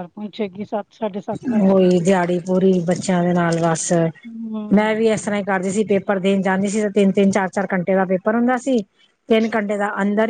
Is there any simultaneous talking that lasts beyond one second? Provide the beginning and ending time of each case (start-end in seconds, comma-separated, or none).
none